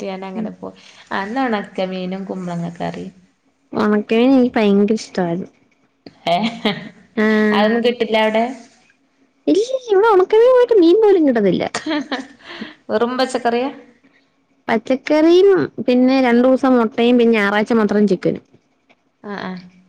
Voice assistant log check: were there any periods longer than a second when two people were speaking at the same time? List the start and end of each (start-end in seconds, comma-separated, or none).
none